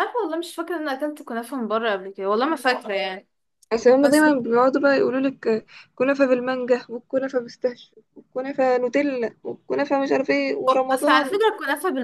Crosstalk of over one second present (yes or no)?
no